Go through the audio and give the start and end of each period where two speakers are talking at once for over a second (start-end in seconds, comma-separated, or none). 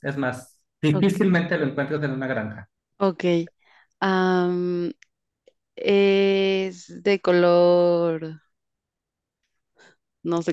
none